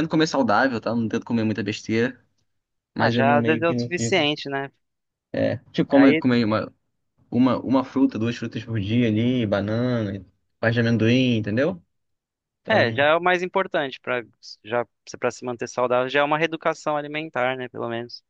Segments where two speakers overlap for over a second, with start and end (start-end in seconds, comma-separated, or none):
3.0-4.3